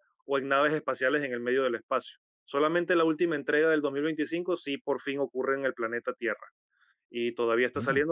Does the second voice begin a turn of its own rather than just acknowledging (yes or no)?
no